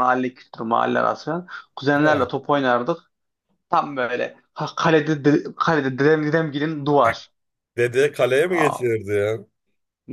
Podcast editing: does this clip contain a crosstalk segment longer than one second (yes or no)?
no